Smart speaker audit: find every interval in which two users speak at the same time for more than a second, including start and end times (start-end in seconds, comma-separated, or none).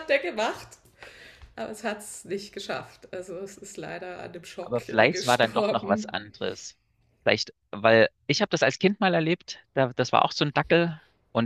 4.6-6.1